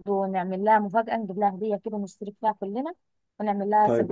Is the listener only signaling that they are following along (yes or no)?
no